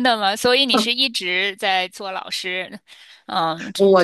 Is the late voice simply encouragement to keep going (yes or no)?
no